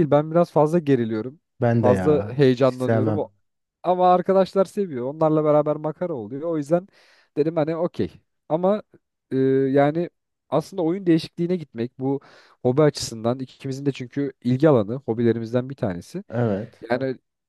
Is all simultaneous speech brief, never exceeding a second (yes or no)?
no